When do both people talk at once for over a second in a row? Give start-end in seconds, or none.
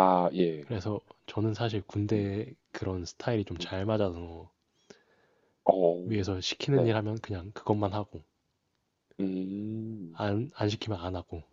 none